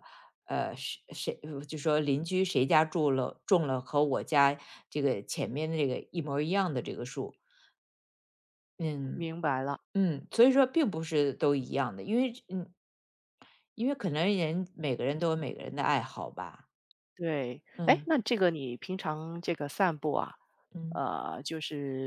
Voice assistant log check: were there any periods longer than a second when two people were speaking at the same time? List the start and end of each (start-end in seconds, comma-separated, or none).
none